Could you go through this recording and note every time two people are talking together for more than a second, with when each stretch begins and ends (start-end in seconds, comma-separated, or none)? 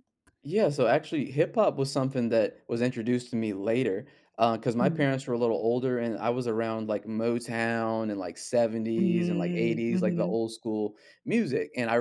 9.0-10.4